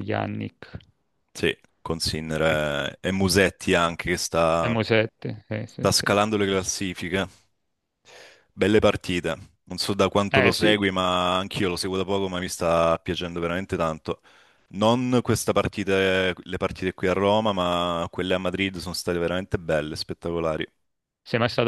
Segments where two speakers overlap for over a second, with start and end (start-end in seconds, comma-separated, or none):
none